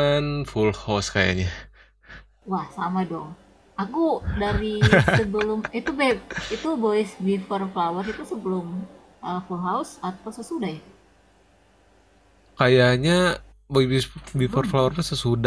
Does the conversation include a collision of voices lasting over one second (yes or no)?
no